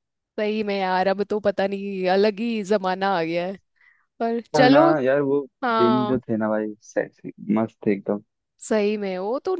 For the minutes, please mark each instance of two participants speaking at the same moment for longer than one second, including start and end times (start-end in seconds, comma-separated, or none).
none